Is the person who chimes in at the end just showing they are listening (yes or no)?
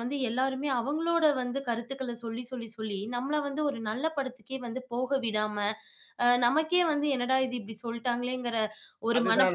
no